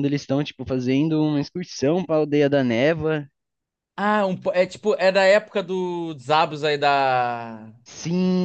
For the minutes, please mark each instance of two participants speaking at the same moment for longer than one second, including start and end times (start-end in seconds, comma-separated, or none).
none